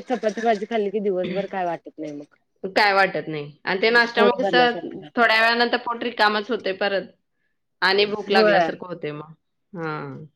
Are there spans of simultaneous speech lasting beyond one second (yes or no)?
no